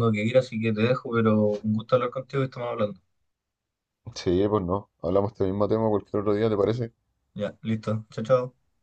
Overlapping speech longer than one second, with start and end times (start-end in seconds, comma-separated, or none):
none